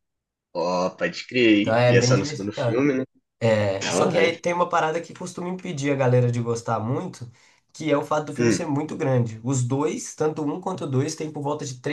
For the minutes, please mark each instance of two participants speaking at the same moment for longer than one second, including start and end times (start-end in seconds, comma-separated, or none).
1.6-2.9